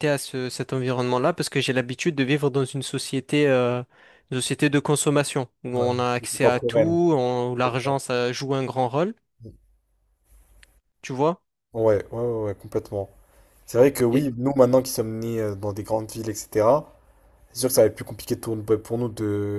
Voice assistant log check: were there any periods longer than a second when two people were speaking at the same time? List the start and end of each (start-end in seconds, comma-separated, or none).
5.8-7.0